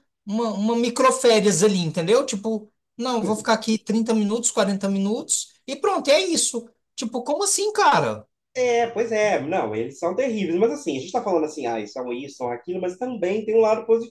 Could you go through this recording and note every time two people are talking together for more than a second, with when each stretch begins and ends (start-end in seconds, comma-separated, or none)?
none